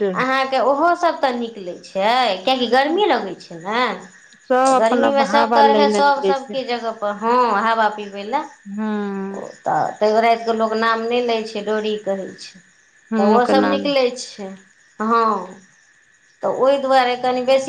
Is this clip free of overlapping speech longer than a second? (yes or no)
no